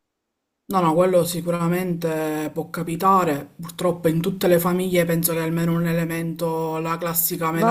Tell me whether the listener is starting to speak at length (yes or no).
yes